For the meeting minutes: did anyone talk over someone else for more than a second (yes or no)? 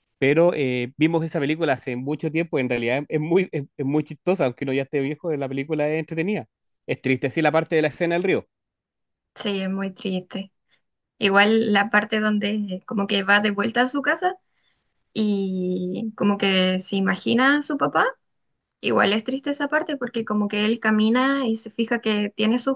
no